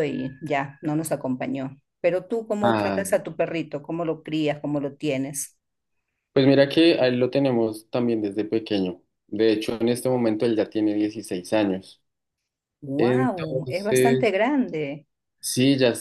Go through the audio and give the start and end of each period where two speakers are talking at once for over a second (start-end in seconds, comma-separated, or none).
13.0-14.3